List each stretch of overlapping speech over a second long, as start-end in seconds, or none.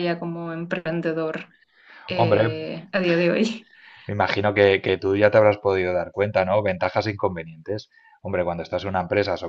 none